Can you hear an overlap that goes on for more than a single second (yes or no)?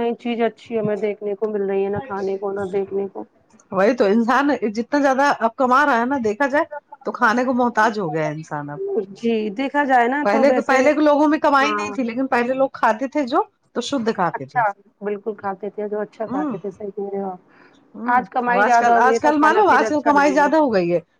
yes